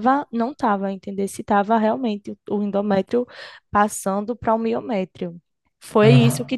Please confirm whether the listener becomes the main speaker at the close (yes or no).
no